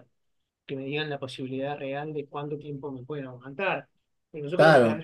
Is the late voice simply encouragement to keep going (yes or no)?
yes